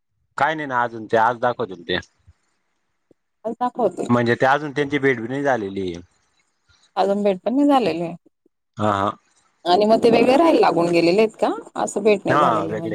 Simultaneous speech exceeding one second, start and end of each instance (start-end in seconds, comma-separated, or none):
none